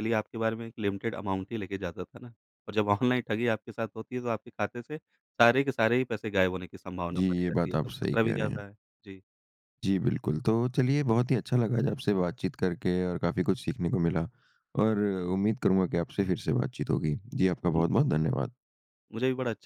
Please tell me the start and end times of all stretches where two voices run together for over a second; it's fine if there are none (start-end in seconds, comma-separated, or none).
7.1-8.6